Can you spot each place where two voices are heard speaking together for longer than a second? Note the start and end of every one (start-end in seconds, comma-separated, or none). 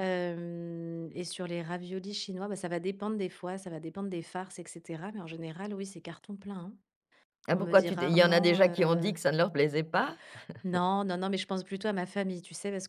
7.5-9.1